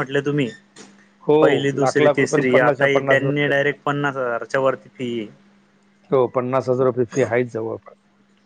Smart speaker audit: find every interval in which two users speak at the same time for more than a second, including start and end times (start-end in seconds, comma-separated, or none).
1.4-2.9